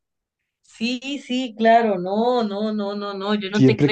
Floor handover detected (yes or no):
yes